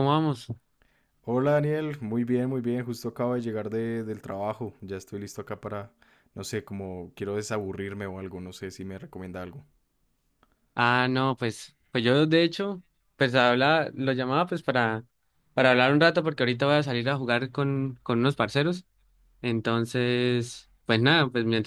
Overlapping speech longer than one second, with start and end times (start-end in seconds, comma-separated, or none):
none